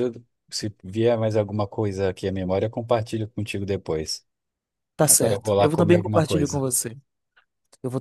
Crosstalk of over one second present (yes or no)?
yes